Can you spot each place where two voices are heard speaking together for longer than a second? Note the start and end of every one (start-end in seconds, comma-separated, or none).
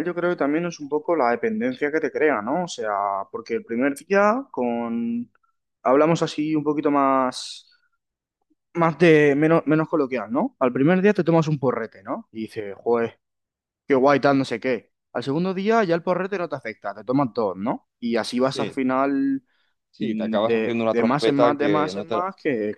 20.0-22.2